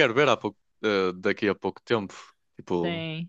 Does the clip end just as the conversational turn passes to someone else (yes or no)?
no